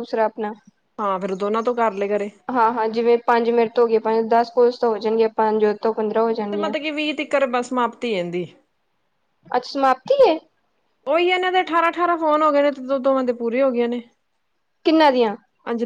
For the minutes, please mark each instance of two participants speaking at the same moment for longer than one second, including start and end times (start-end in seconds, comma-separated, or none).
none